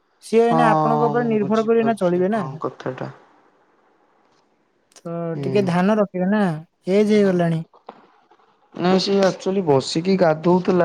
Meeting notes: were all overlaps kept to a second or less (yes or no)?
no